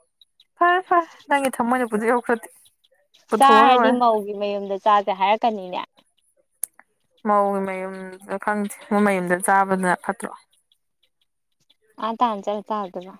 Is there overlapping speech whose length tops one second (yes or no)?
no